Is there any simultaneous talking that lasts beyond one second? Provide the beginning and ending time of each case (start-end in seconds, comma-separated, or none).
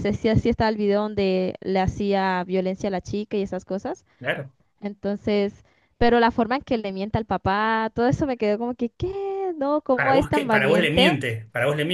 10.0-11.2